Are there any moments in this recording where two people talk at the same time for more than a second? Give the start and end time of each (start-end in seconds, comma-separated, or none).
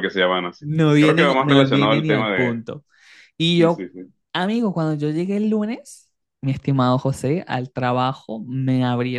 0.6-2.5